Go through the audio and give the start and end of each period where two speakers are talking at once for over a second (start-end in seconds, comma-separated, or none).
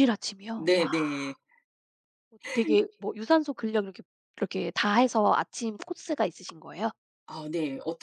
none